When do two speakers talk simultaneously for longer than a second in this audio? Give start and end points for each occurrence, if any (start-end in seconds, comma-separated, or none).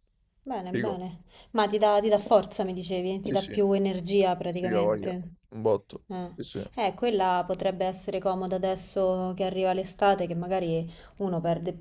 none